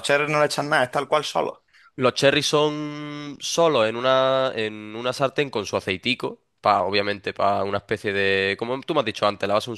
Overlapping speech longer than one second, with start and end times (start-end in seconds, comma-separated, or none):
none